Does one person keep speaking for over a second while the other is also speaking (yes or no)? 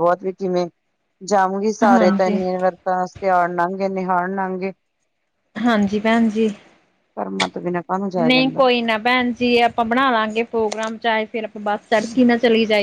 no